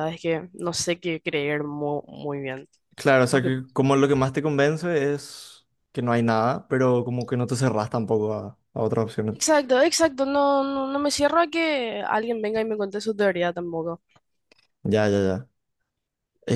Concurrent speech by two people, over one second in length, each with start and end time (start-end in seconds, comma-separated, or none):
none